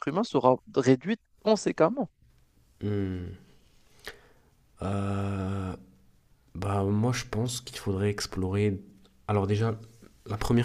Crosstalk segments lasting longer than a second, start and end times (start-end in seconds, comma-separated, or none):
none